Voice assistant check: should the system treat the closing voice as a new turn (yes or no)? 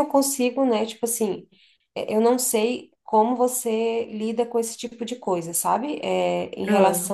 no